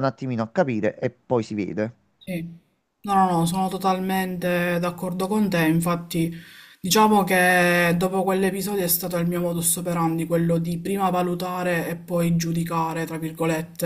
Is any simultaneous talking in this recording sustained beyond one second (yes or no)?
no